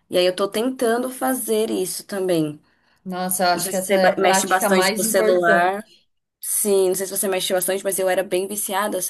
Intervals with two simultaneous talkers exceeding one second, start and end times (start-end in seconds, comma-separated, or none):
3.5-5.8